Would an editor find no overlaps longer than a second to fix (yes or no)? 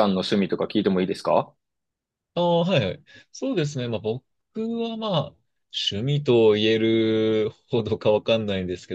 yes